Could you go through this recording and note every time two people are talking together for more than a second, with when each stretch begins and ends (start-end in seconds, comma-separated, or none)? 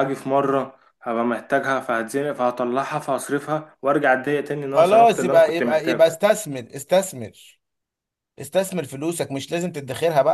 4.7-6.2